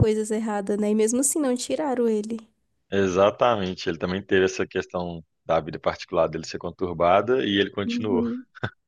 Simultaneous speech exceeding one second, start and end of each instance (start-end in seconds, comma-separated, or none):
none